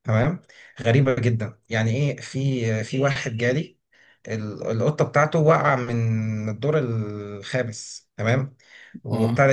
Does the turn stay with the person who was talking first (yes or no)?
yes